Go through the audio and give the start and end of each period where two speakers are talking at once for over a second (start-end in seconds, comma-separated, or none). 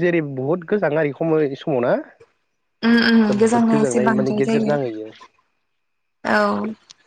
3.3-4.8